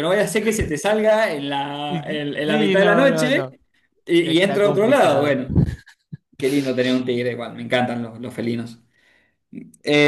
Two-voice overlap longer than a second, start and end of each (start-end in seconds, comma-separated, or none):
1.9-3.4, 4.2-5.4